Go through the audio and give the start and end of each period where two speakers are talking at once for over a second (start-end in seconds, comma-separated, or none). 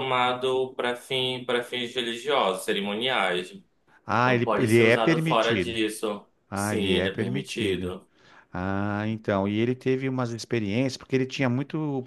4.2-5.8, 6.5-7.9